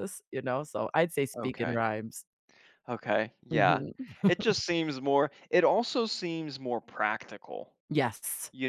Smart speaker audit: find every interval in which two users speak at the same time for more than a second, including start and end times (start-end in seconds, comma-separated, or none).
none